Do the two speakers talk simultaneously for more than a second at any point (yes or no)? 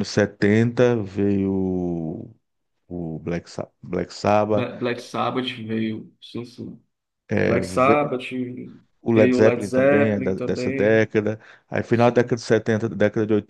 yes